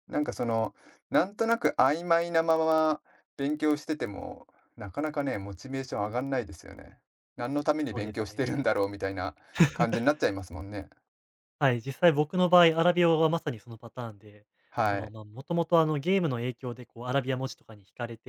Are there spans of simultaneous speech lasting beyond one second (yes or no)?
no